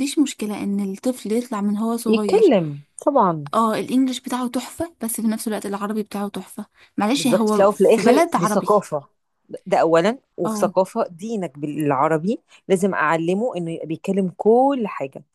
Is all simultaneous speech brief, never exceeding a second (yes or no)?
no